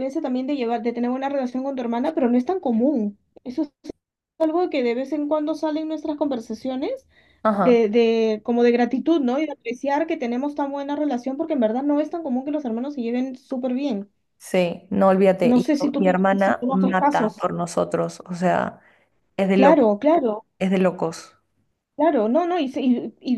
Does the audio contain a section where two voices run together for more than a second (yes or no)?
yes